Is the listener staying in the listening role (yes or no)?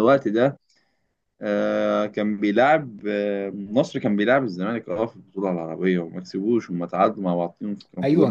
no